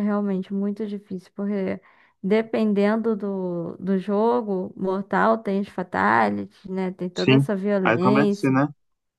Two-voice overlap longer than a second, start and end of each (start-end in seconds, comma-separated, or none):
7.1-8.6